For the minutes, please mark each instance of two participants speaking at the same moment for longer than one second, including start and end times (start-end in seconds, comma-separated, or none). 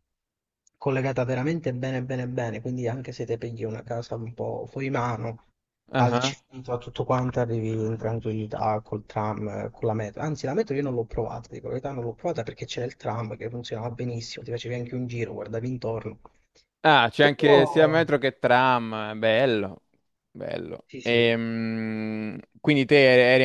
none